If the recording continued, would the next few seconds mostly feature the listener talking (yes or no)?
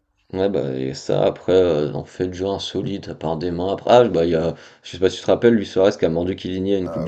yes